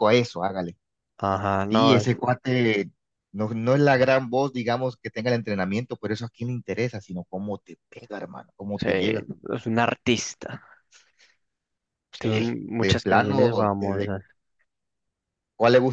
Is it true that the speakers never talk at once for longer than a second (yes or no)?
no